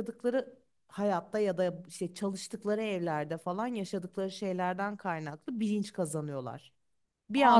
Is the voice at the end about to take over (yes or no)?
yes